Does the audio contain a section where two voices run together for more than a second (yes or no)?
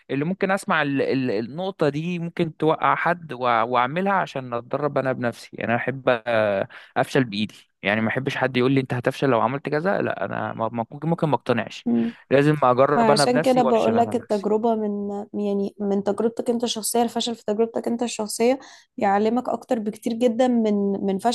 yes